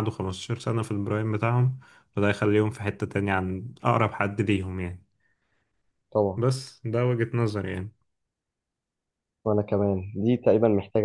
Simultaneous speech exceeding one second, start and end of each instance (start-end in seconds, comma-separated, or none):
none